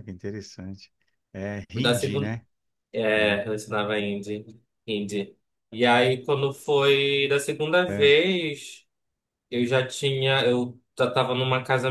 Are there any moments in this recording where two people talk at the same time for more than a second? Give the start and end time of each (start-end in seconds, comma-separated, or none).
none